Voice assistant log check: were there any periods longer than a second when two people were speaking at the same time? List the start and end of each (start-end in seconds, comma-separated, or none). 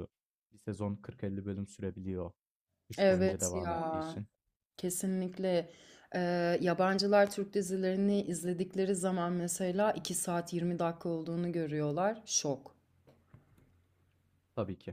3.0-4.2